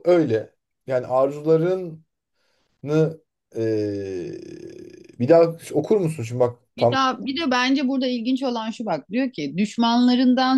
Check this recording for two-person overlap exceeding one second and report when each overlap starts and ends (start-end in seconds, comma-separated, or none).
none